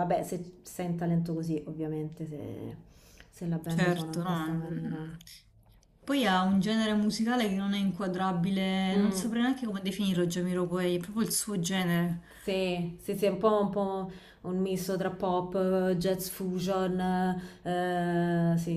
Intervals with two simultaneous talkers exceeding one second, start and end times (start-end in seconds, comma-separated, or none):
3.7-5.0